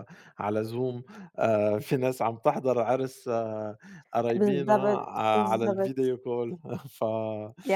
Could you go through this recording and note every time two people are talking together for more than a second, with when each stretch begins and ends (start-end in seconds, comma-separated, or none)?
4.4-6.1